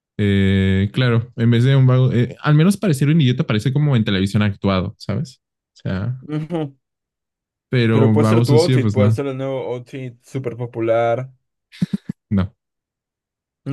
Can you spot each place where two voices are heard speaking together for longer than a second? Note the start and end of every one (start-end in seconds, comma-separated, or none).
7.9-9.2